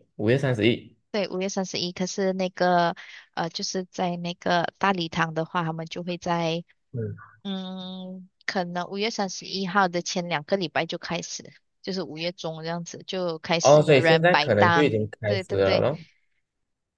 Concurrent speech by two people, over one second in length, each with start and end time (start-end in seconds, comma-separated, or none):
13.6-15.8